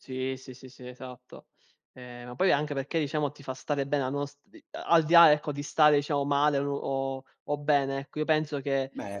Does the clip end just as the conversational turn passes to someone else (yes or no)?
no